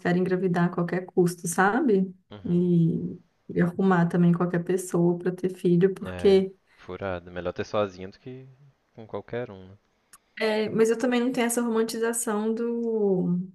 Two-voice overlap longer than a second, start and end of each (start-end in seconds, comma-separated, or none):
none